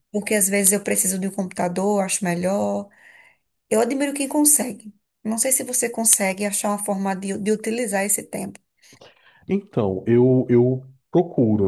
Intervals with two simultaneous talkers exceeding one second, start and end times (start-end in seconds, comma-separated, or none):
none